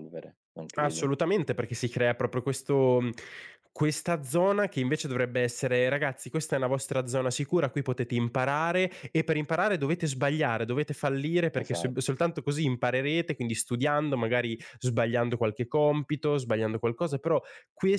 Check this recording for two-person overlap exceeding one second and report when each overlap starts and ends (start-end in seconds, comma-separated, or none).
none